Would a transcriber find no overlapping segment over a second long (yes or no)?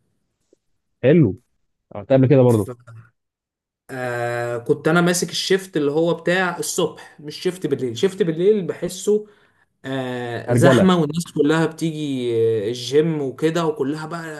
yes